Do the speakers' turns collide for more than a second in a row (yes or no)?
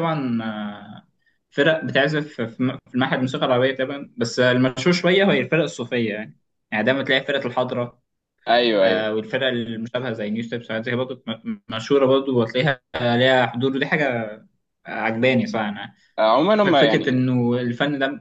no